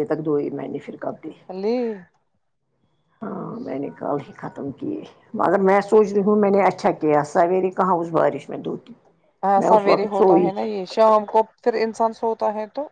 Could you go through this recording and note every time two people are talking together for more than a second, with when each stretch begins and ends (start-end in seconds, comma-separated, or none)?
none